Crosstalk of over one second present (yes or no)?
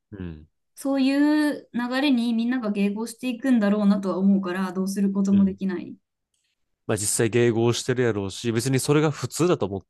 no